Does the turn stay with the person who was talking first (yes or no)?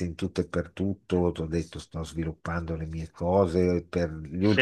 yes